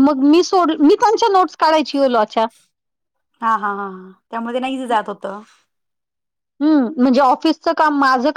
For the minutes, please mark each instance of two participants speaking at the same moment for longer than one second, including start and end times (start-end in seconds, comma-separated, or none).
none